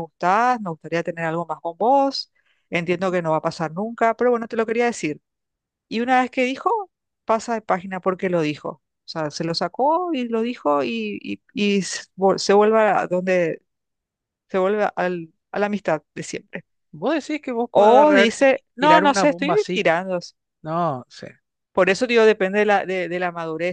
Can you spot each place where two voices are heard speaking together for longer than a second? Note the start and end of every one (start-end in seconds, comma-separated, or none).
17.7-19.9